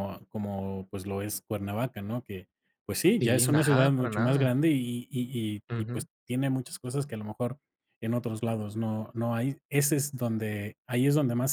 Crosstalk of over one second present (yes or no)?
yes